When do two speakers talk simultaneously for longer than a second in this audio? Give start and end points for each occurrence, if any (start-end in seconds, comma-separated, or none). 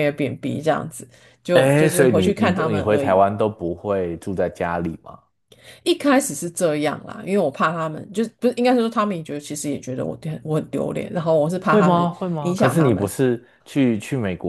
1.5-3.2, 11.6-13.1